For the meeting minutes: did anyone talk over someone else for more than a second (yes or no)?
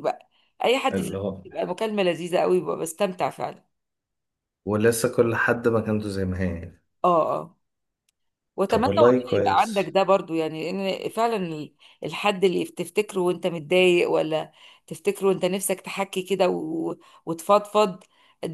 yes